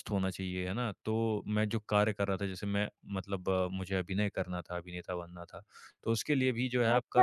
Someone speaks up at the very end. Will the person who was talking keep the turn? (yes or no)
no